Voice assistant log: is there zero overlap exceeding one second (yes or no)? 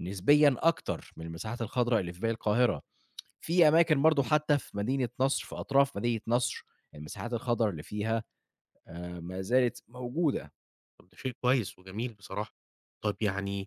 yes